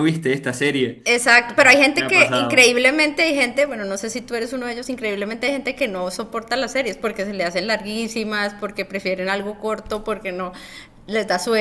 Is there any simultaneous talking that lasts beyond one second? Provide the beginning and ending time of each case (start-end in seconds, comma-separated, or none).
1.4-2.8